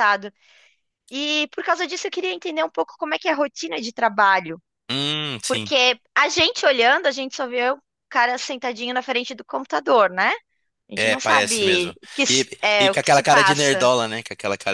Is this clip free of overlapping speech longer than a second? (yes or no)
no